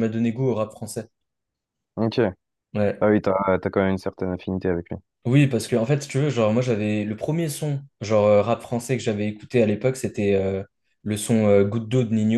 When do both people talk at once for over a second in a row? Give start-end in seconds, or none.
none